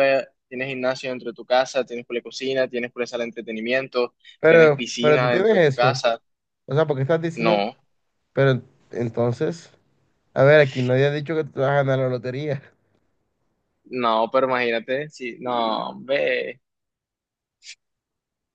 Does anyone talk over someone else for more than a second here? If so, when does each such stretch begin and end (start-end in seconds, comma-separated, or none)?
4.4-6.0